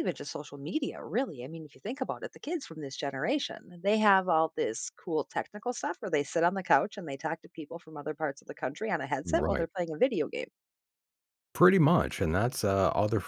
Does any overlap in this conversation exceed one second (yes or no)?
no